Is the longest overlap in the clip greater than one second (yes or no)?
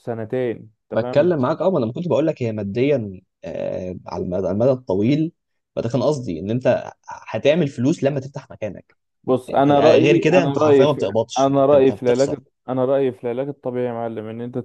yes